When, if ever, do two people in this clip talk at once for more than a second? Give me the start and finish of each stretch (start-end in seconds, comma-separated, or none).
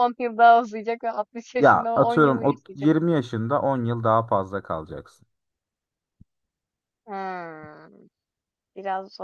1.6-2.9